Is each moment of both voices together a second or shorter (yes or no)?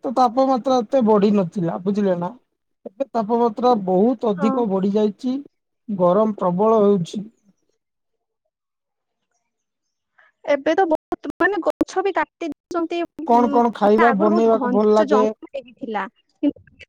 no